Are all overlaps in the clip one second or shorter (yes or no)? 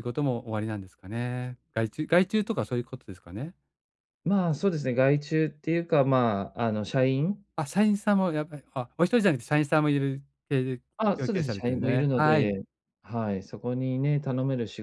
no